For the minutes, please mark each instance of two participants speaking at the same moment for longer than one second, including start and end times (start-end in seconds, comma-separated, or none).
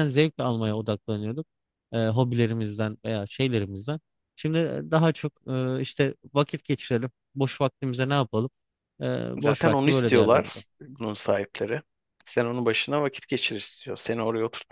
9.4-10.6